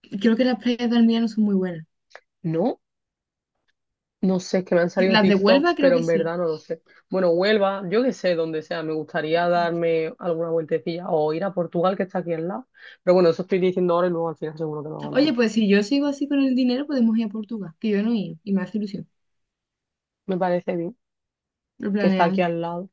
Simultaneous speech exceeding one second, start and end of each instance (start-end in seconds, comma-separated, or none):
5.0-6.3